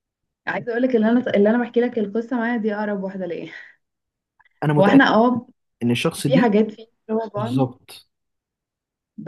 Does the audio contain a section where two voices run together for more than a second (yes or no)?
no